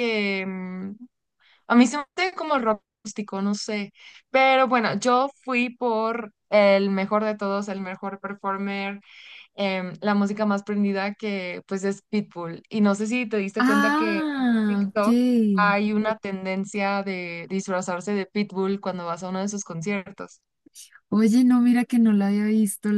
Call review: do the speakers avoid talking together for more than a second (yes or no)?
no